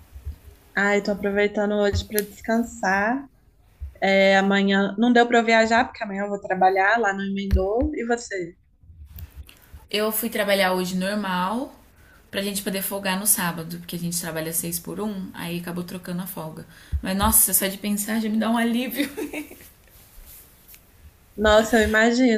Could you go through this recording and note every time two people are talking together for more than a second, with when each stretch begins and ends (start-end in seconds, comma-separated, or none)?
none